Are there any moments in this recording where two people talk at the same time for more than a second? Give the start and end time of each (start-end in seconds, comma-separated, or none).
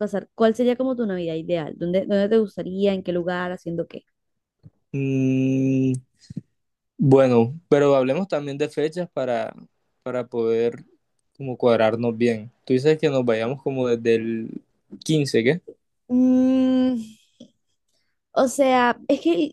none